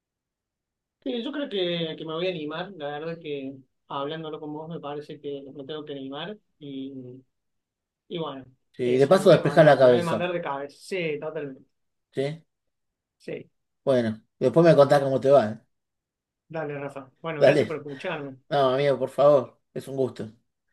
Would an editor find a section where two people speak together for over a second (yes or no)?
yes